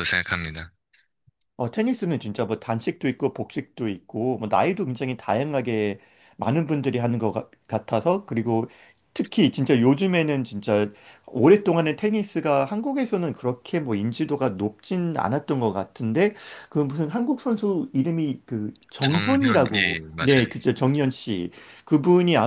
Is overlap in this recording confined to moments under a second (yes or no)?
no